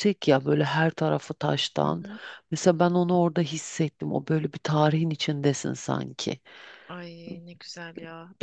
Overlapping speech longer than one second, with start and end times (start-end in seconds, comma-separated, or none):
none